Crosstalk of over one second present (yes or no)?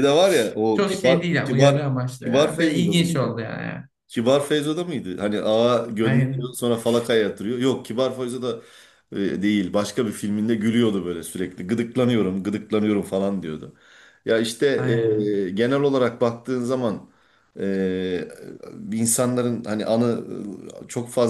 yes